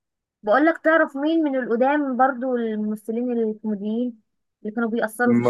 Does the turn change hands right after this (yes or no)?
yes